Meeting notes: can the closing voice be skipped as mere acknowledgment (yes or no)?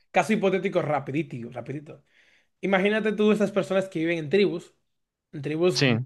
yes